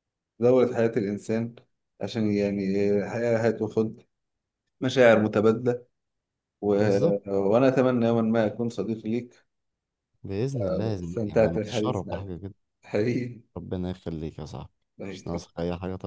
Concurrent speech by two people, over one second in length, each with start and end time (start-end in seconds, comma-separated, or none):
10.6-12.3